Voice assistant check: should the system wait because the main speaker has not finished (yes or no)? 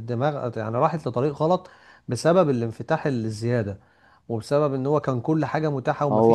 yes